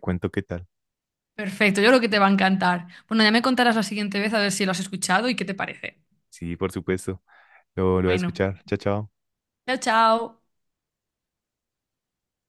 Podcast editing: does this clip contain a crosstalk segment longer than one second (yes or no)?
no